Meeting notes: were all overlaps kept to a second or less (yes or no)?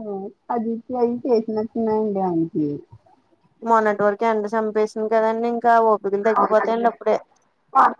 yes